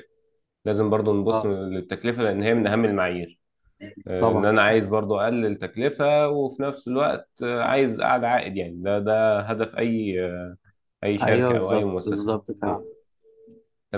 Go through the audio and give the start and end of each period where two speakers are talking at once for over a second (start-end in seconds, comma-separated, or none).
11.2-12.8